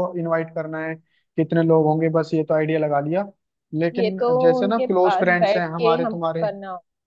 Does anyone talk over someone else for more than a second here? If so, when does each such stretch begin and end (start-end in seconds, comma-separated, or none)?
3.9-6.5